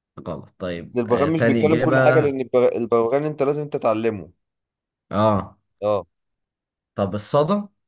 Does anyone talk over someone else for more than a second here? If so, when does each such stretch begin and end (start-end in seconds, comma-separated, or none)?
0.9-2.3